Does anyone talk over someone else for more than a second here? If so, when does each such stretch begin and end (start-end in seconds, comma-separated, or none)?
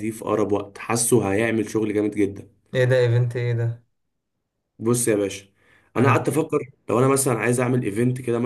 none